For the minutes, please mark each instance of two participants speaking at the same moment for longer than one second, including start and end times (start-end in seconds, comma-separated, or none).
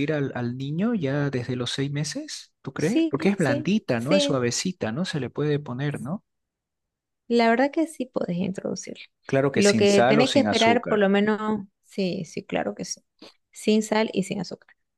2.8-4.4, 9.5-11.1